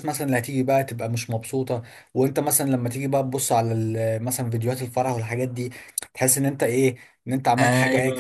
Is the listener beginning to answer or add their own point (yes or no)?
yes